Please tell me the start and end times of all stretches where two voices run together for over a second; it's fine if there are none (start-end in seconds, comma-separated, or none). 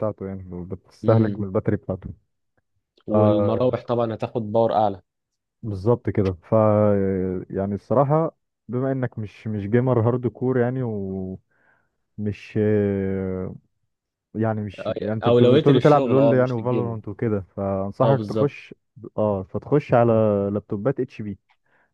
14.8-17.0